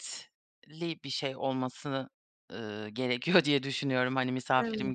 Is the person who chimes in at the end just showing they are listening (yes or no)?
yes